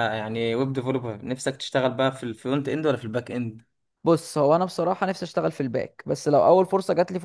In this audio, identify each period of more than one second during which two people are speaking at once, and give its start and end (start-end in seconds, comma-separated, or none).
none